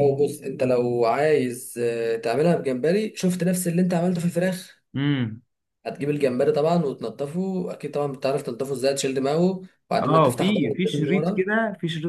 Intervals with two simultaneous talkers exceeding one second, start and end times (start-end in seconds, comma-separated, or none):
10.0-11.5